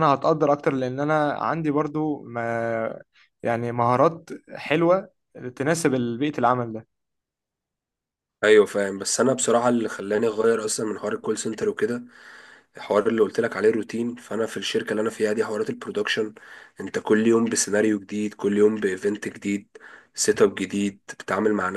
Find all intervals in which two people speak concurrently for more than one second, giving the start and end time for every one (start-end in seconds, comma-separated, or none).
none